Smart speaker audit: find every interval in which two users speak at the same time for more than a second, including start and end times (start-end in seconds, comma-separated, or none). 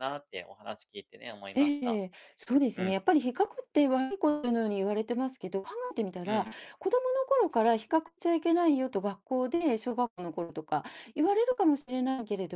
none